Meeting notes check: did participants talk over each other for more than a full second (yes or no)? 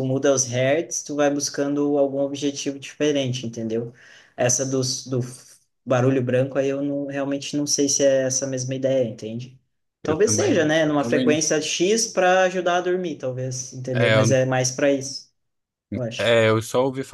yes